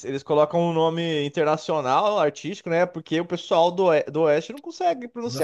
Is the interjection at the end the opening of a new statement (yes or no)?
yes